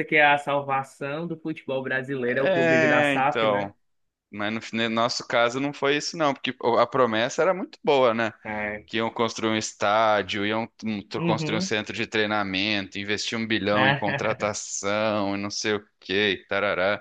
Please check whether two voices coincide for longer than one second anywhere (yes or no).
yes